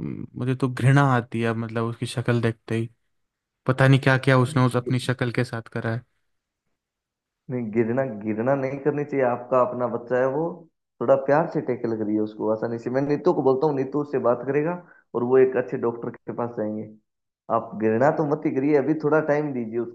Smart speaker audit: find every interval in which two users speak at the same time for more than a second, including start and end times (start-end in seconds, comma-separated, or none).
none